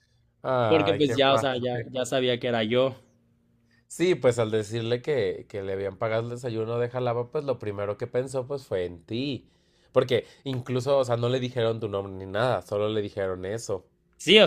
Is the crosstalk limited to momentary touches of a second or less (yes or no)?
no